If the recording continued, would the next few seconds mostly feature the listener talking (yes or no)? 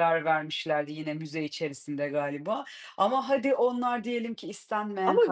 yes